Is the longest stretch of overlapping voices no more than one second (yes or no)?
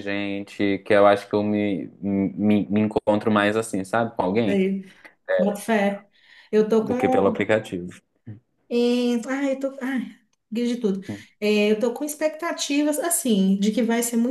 yes